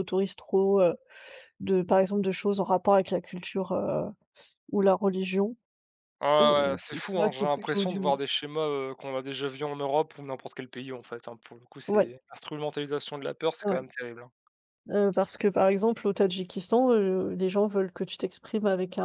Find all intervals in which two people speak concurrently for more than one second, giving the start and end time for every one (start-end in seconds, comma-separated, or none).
6.4-8.1